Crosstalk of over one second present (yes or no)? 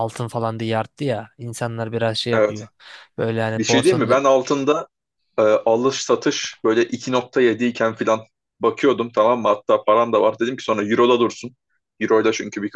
no